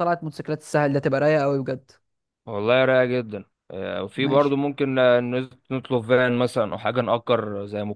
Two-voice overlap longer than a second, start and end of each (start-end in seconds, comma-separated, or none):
none